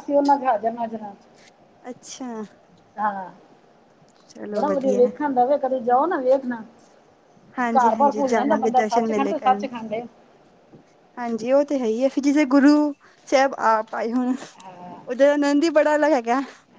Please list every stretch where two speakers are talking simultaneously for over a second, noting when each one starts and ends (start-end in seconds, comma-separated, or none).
7.8-9.7